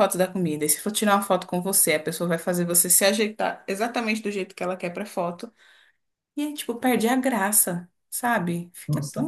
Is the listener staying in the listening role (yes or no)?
no